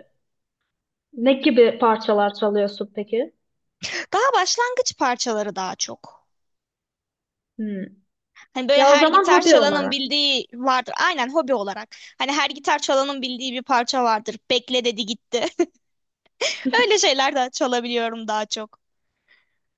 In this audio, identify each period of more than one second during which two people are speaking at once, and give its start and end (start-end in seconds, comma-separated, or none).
8.7-10.0